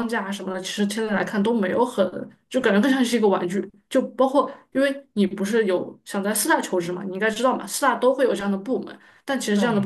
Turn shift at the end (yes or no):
no